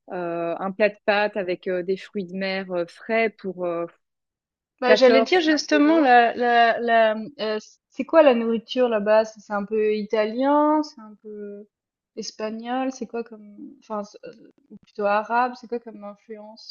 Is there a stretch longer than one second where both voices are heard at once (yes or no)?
yes